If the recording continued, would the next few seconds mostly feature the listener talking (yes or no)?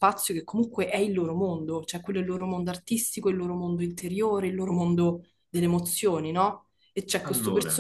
no